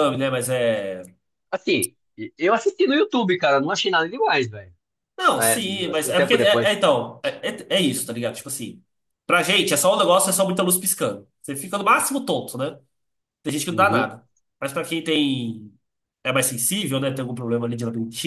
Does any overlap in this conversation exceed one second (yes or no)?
yes